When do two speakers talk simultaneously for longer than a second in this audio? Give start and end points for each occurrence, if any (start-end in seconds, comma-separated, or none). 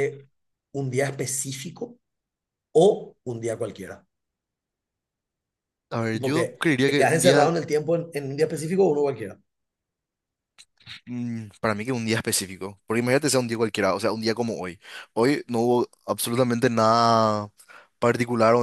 6.1-7.5